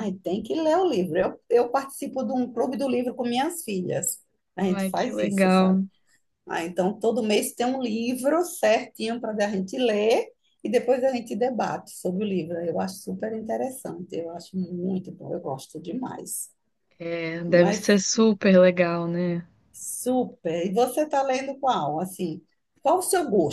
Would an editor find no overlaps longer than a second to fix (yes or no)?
no